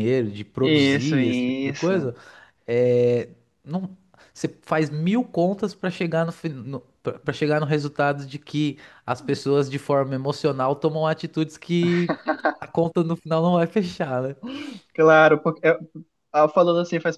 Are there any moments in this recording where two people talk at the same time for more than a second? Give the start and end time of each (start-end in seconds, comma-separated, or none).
0.6-2.1